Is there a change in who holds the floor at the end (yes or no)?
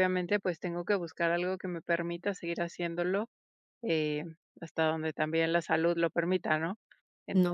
yes